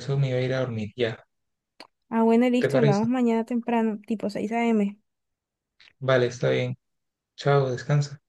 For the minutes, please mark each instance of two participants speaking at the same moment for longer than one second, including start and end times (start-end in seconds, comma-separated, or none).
none